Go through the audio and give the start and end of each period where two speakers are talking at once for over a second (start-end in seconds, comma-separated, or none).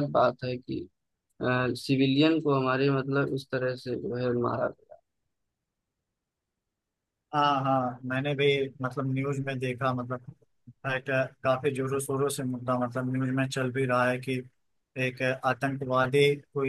none